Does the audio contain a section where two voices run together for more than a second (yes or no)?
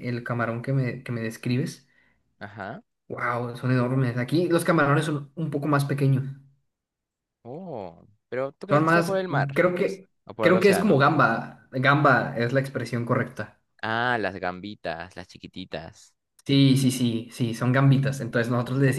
yes